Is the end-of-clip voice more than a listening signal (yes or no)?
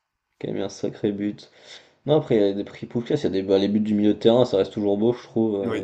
yes